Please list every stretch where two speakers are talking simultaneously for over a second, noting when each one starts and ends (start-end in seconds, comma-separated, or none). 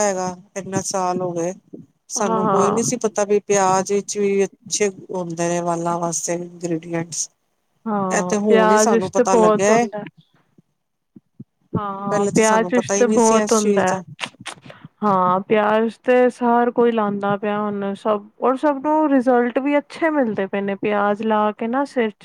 8.1-9.8, 12.4-13.9